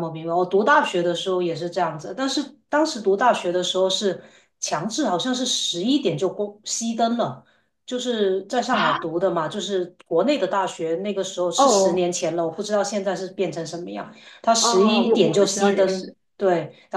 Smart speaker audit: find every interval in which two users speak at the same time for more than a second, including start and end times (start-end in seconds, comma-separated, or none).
14.6-16.1